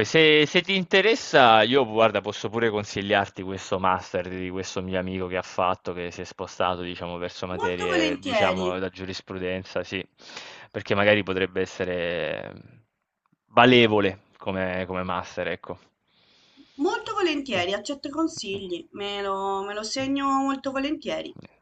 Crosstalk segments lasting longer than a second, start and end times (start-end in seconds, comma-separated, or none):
7.5-8.8